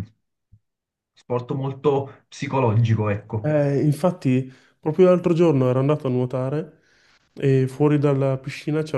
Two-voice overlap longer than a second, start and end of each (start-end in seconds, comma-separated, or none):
none